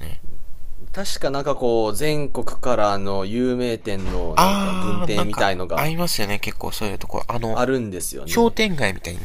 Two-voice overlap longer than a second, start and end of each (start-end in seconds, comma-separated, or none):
4.3-5.9